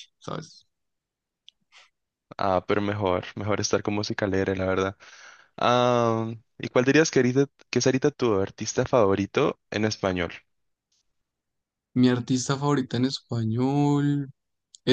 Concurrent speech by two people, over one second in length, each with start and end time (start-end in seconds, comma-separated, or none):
none